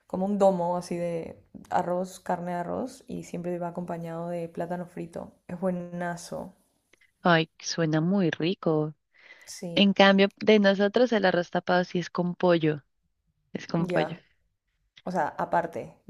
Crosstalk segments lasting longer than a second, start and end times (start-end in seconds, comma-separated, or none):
none